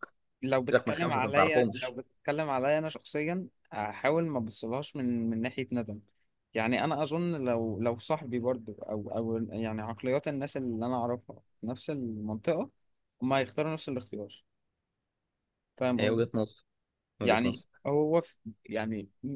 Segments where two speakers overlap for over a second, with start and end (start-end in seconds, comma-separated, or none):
0.7-2.0